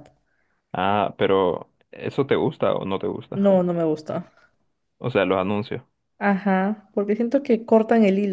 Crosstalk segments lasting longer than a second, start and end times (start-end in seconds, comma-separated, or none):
none